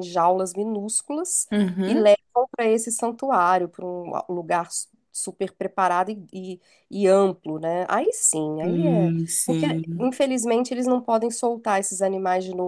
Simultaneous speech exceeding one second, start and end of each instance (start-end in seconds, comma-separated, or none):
8.6-10.1